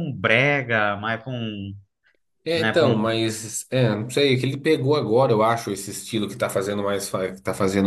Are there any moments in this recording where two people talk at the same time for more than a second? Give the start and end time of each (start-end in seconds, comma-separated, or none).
none